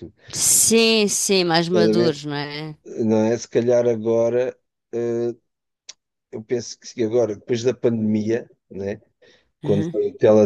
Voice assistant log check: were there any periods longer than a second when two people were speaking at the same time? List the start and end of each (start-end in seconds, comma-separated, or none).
none